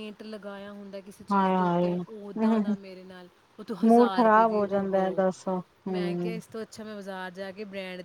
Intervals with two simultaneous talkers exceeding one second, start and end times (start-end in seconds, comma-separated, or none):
1.3-2.7, 3.9-5.2